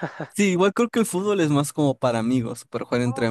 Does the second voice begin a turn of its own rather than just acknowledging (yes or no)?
no